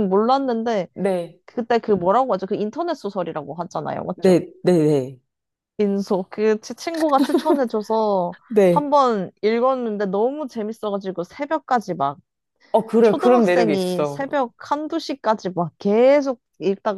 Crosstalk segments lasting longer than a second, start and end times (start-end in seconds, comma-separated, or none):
13.0-14.3